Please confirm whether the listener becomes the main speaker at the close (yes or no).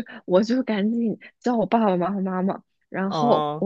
no